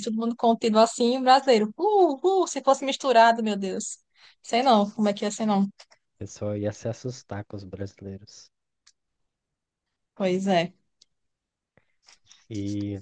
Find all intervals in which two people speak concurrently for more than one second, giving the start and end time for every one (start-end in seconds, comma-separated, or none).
none